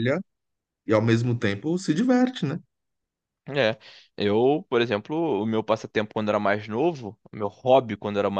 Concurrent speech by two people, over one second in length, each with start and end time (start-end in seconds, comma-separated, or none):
none